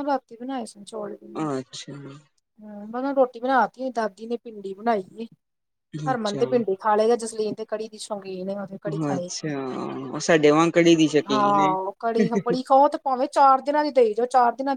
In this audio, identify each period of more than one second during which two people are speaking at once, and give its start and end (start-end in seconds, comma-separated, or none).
none